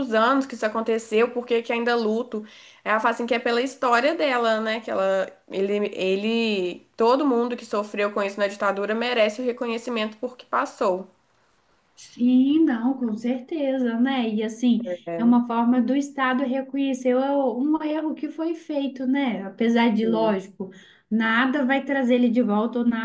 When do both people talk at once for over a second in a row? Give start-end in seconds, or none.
none